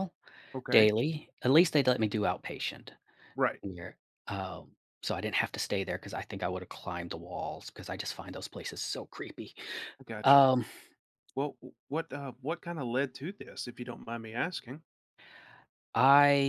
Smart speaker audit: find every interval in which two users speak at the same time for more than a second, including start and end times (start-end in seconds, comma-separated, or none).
none